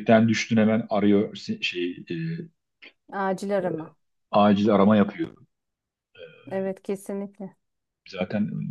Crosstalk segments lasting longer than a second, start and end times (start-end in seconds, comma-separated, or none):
none